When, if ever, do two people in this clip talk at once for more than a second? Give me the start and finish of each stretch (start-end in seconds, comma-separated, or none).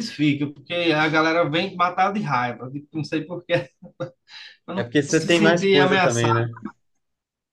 4.8-6.5